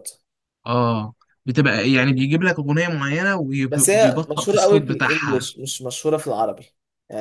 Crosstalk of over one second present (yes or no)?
yes